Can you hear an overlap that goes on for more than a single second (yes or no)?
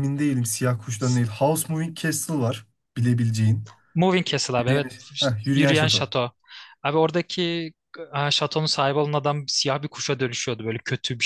yes